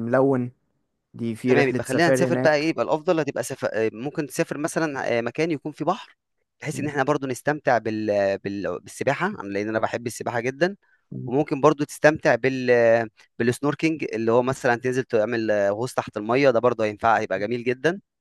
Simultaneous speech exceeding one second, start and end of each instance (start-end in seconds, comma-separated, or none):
1.4-2.7